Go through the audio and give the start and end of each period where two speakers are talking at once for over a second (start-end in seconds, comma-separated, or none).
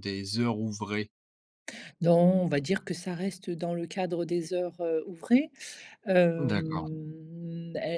none